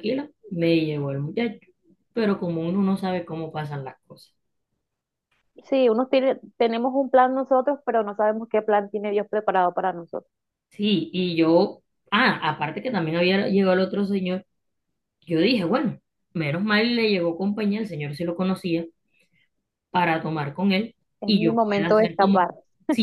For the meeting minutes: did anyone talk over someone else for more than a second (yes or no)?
yes